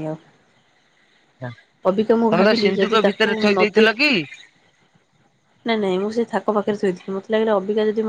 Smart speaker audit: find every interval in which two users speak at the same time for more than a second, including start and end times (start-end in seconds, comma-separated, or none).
1.9-3.9